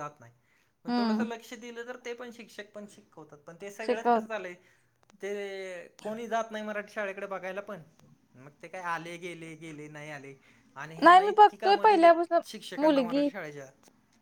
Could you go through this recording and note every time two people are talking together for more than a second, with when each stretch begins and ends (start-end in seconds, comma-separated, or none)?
11.0-13.3